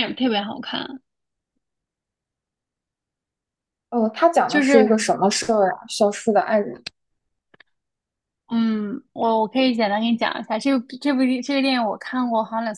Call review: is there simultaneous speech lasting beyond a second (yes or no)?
no